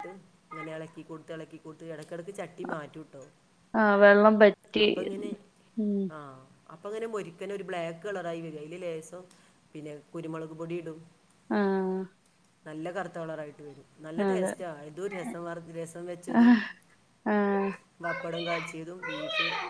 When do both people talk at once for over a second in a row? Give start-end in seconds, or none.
none